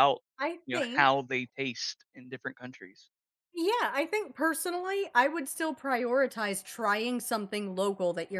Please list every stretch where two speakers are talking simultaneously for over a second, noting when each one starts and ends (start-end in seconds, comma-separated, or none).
none